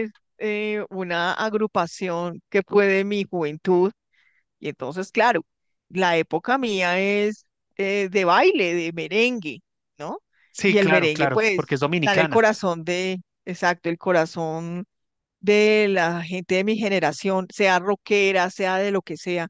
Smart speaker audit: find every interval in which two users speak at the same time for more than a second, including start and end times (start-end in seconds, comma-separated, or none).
10.7-12.4